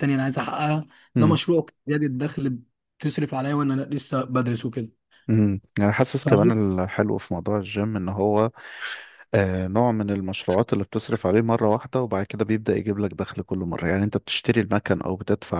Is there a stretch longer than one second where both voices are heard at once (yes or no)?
no